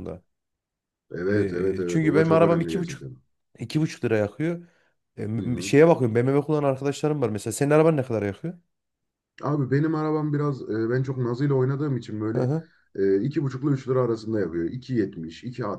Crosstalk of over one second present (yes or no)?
yes